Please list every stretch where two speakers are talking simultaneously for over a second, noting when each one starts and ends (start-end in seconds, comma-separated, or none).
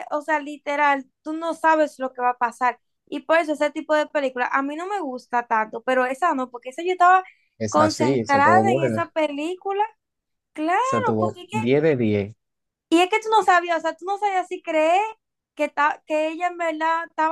7.7-9.1